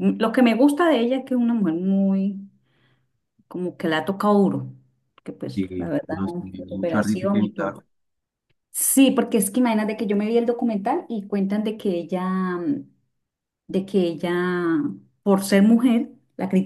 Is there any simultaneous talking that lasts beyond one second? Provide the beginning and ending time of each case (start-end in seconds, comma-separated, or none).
5.5-7.8